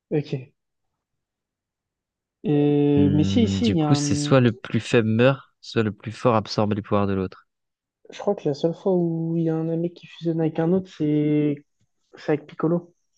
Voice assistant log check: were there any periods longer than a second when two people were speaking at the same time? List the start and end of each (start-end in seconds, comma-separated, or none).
3.0-4.3